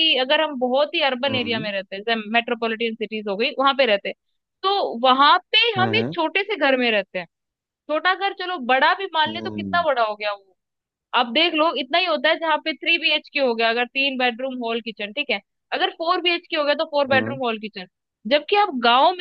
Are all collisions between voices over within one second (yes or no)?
yes